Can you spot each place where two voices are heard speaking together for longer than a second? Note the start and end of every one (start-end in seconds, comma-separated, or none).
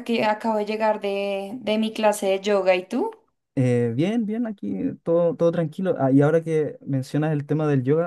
none